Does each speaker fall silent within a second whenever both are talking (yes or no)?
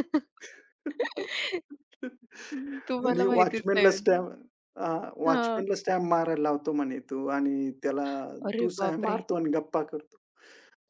no